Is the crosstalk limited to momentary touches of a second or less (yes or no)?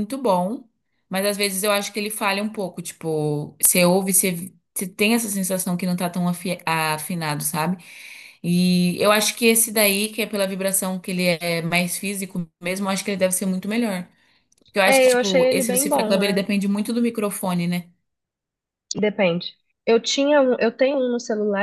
no